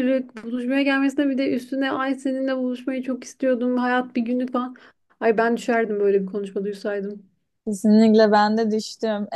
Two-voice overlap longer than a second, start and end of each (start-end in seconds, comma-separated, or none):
none